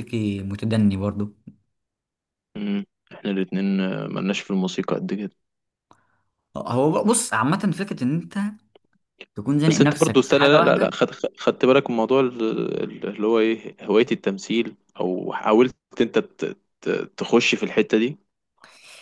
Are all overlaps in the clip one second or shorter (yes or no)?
no